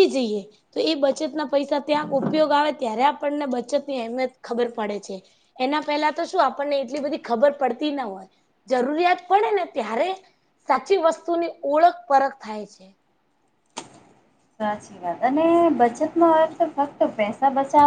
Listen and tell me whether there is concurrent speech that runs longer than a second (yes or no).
no